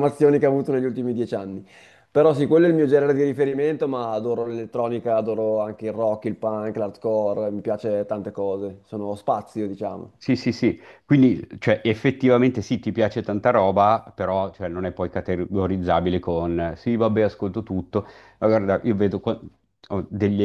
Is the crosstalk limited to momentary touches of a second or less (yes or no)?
yes